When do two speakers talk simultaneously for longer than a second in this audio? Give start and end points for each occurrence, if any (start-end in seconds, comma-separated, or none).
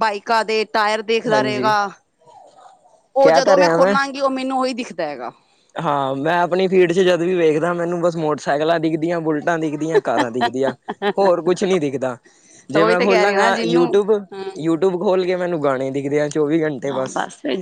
12.7-14.0